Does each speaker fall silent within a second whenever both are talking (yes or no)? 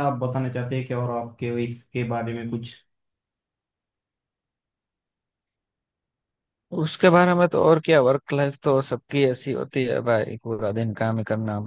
yes